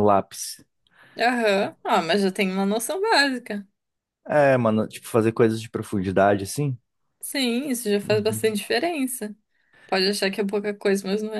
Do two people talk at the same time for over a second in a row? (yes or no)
no